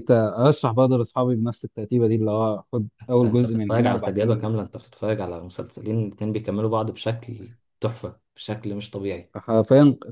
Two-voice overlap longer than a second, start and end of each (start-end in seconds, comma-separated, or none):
3.0-4.4